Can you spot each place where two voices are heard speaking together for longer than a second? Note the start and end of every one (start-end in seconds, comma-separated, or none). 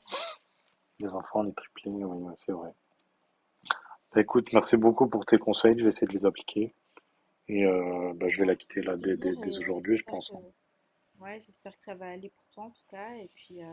8.8-10.3